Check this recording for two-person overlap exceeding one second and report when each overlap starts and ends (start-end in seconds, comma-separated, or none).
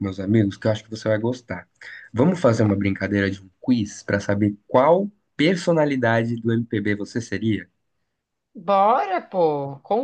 none